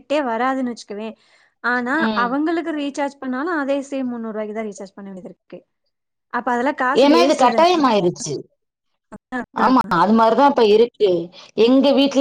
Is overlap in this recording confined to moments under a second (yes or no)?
yes